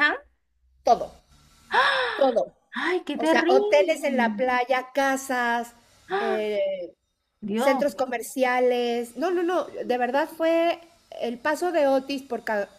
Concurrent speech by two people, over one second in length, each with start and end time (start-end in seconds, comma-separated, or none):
3.1-4.4